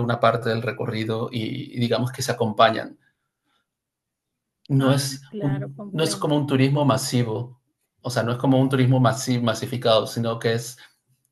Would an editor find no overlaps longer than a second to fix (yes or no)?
no